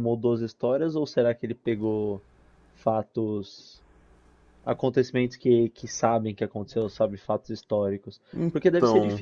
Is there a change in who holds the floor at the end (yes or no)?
no